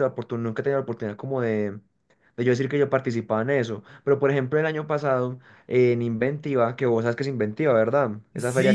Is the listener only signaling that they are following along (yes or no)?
no